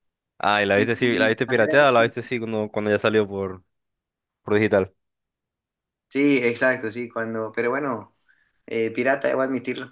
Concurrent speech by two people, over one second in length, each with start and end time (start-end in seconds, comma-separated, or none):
0.7-2.1